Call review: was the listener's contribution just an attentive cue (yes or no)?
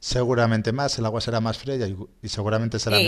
yes